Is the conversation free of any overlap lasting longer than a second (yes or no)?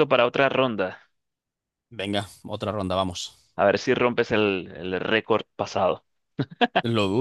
yes